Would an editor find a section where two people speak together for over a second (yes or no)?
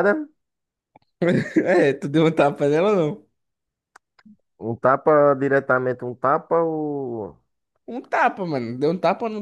no